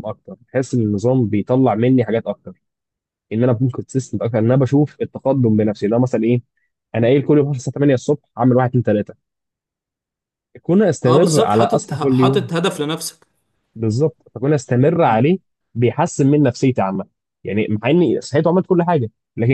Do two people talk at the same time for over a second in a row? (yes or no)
yes